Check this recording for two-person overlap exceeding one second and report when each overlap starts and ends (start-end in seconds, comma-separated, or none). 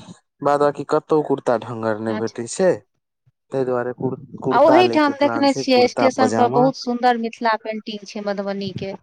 4.5-6.7